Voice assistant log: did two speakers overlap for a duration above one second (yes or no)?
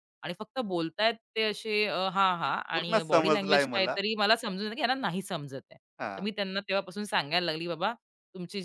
yes